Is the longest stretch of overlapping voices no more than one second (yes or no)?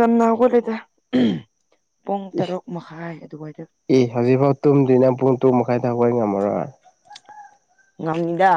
yes